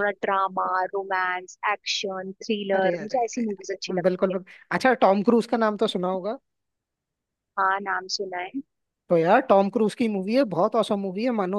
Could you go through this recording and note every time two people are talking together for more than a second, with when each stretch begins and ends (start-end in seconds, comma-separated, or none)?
2.8-4.3